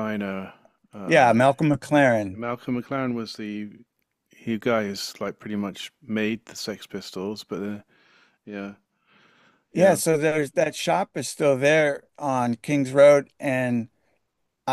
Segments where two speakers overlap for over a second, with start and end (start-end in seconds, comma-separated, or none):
none